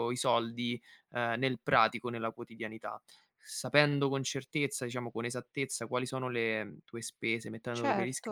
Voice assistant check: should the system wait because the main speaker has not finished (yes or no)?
yes